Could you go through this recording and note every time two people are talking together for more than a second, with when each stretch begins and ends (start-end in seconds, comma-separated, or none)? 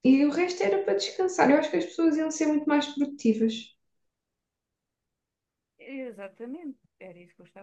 none